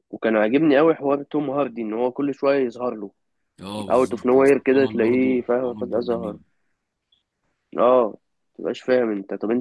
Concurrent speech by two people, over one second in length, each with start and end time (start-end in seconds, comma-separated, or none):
3.9-6.4